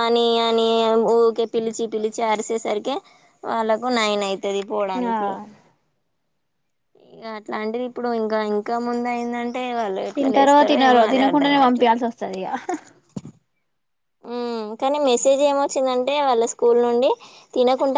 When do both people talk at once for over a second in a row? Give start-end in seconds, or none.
none